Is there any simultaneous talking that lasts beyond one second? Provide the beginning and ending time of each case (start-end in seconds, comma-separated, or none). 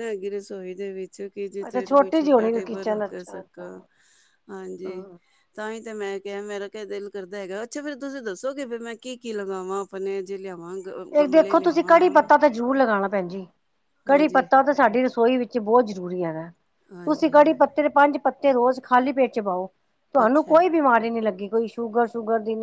1.7-3.6